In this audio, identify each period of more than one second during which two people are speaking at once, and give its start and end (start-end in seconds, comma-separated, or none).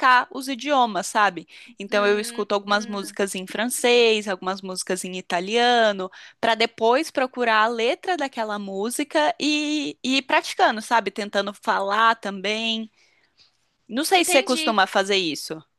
1.9-3.2